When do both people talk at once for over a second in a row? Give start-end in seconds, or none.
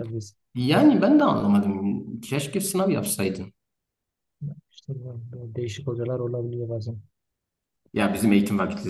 none